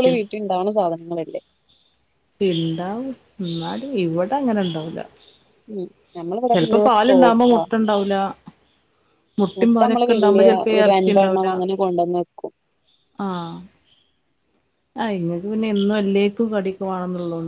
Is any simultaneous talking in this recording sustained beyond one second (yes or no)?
yes